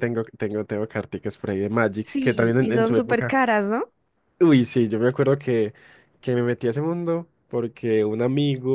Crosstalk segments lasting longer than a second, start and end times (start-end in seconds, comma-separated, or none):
2.0-3.4